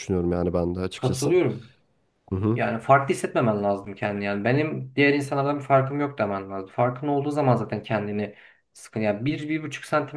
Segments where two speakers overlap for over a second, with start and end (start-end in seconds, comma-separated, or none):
none